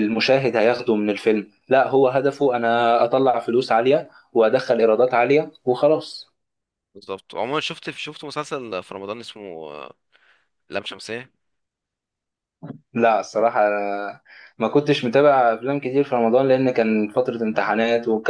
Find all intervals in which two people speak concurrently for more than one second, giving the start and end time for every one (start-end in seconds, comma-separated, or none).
none